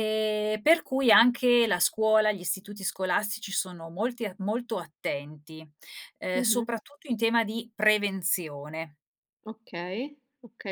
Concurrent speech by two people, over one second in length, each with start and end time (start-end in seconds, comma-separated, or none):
none